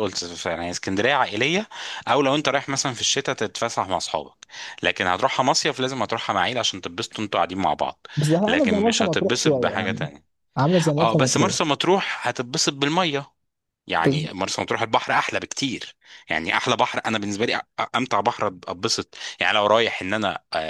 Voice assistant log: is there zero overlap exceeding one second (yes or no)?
no